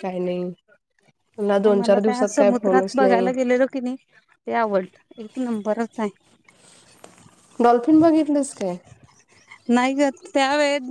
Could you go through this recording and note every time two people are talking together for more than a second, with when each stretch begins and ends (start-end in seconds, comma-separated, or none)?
1.6-3.3